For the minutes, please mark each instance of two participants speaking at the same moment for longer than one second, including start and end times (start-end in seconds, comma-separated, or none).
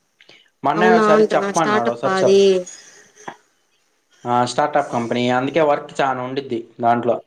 0.8-2.4